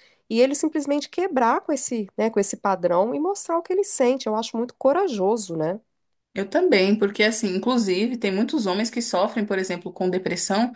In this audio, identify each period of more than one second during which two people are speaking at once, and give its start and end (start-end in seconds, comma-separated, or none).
none